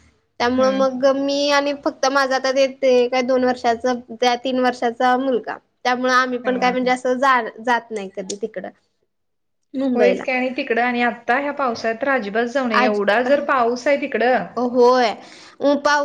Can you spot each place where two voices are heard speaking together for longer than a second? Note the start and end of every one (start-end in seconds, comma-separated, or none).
none